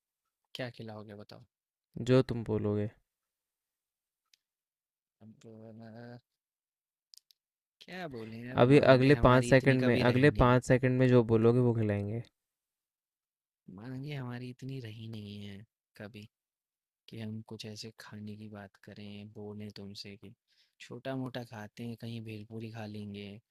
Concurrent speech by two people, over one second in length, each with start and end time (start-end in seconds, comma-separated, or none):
8.6-10.6